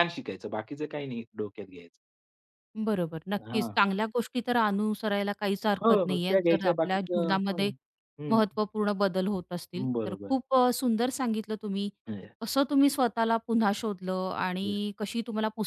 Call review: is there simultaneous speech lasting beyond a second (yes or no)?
yes